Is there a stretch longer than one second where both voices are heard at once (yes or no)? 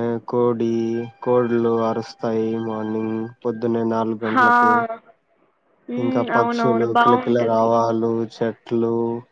yes